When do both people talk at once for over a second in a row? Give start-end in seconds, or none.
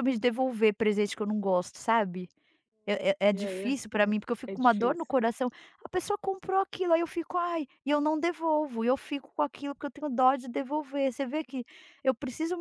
3.3-5.1